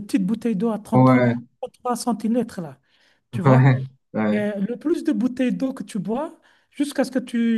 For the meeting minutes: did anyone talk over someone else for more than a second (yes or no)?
no